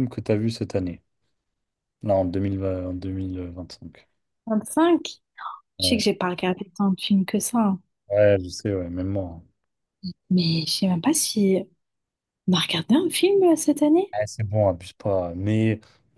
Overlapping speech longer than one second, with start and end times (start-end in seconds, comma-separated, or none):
none